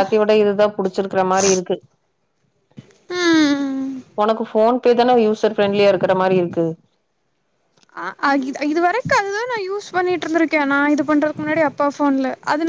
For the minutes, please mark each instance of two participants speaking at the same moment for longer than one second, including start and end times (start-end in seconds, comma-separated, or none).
none